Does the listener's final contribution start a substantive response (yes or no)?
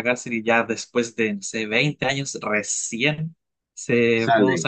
no